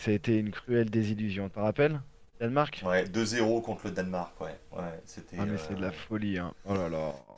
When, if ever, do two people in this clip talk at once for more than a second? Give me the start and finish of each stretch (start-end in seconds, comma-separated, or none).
none